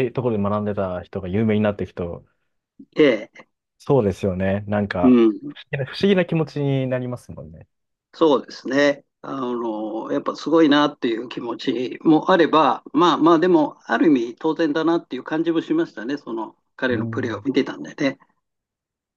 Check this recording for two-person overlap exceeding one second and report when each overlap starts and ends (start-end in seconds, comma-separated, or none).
none